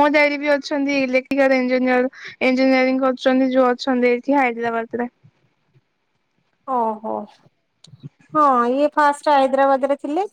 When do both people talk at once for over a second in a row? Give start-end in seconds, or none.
none